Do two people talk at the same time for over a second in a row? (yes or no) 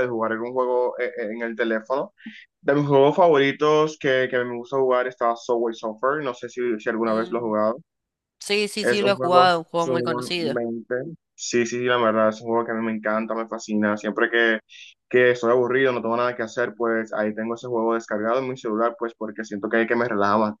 yes